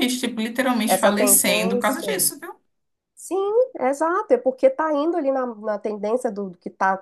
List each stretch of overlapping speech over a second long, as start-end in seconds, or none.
0.9-2.1